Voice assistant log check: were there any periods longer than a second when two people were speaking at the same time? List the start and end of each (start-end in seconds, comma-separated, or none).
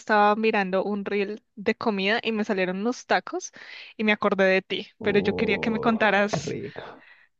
5.0-6.6